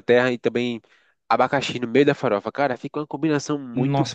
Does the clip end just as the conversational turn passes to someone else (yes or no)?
yes